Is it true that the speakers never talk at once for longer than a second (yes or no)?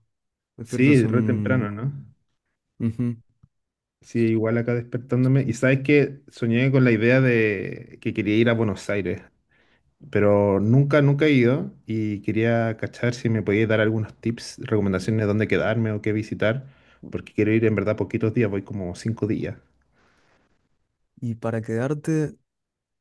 no